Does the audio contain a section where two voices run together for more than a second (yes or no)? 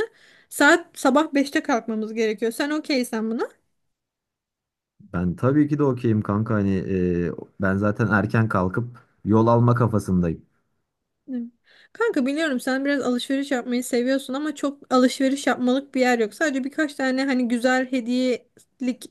no